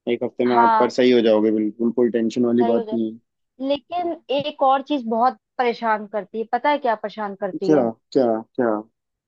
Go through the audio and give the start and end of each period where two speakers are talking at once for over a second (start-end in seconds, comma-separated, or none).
none